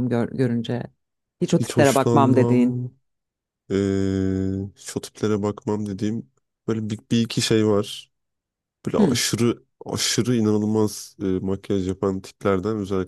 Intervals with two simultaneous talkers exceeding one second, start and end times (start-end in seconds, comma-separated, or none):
1.6-2.8